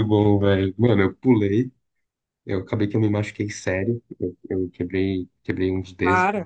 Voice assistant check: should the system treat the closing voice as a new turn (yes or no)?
no